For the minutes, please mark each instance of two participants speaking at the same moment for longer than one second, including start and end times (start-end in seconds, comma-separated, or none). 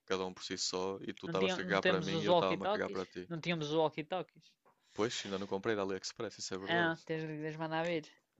1.2-3.3